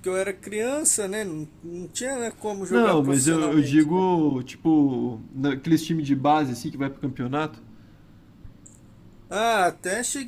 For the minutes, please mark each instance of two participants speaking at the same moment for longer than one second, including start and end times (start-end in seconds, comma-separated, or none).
2.7-4.0